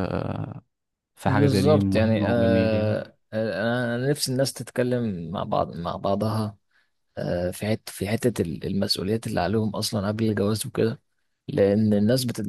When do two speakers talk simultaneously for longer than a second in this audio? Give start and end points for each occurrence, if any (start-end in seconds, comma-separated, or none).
1.2-3.0